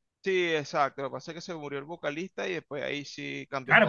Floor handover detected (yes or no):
yes